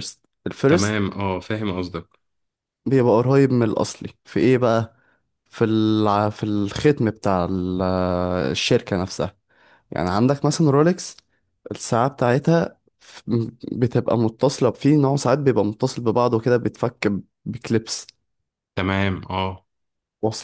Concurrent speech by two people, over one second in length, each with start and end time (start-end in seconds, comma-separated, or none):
none